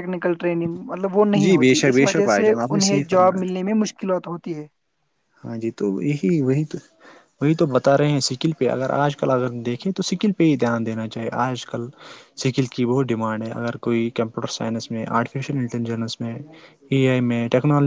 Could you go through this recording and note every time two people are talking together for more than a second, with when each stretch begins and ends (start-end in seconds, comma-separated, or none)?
1.4-3.5